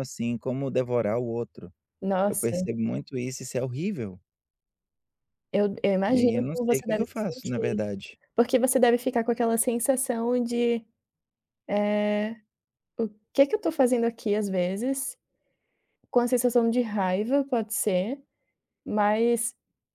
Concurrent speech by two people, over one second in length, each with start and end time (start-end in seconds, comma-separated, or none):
6.1-7.8